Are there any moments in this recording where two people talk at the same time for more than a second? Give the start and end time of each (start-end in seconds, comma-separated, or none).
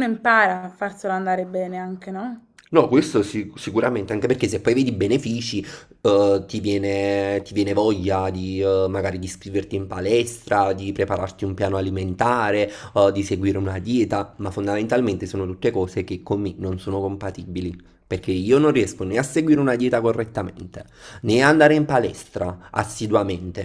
none